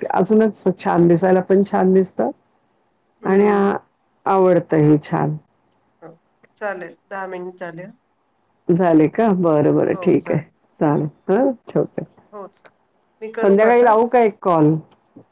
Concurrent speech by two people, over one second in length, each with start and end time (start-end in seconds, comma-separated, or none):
none